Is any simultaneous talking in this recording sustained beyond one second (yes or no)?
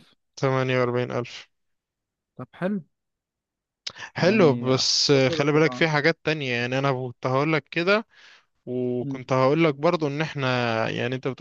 yes